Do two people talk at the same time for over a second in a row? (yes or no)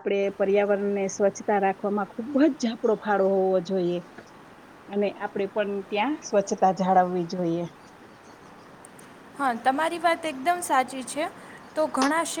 no